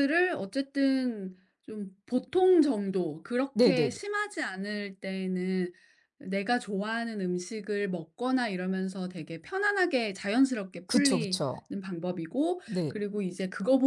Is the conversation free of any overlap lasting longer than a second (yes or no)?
yes